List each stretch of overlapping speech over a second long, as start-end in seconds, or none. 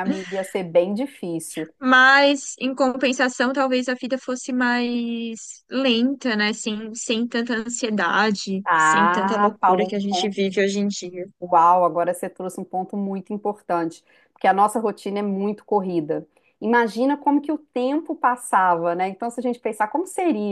8.6-10.3